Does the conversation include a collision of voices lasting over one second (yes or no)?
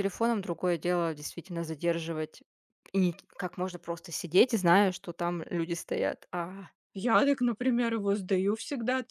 no